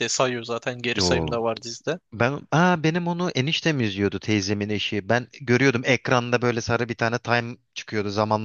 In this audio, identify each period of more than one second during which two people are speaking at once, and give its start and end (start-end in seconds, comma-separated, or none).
none